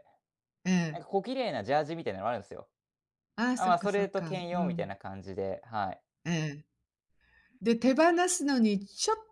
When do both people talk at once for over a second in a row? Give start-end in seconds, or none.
3.5-4.9